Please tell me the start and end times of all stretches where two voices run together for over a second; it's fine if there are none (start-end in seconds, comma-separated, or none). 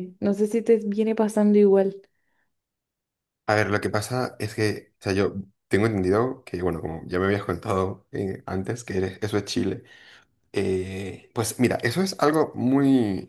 none